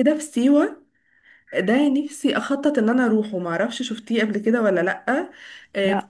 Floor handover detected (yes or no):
no